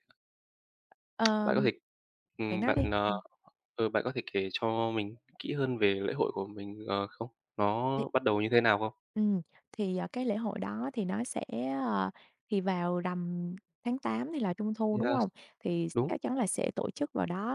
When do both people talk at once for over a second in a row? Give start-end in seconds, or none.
none